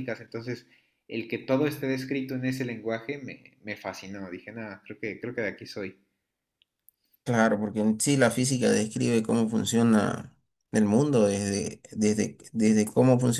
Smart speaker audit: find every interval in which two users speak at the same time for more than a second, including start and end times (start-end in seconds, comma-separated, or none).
none